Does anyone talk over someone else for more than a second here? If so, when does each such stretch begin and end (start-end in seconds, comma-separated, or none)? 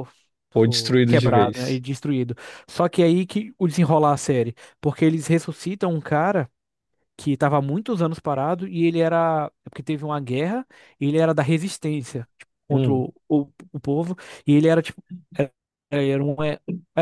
0.5-1.8